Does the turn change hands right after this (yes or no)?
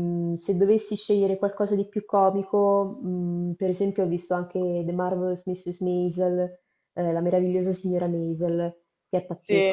yes